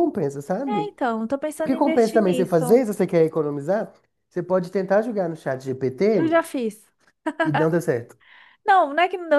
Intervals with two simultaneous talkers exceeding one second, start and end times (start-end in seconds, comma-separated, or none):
1.6-2.9